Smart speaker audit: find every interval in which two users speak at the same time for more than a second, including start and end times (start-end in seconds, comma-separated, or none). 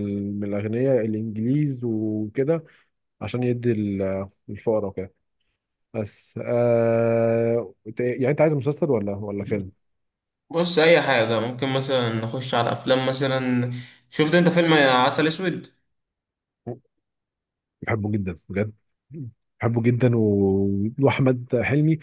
none